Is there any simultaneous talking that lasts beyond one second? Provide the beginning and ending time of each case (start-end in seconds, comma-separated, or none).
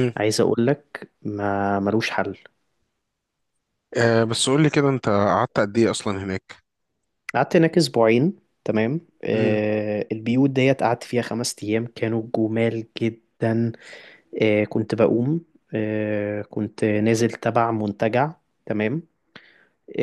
none